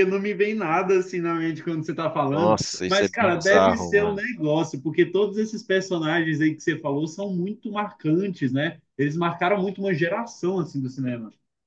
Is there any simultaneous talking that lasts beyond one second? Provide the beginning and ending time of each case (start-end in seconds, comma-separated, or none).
2.3-4.0